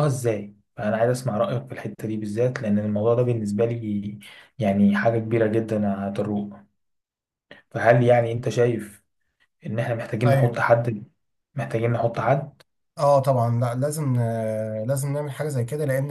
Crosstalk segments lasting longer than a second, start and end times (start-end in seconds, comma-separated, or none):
none